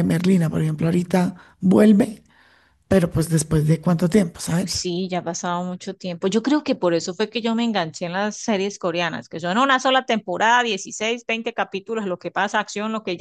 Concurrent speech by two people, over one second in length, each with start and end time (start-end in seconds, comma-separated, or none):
none